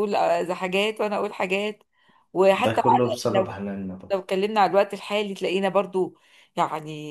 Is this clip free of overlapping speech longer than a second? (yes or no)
yes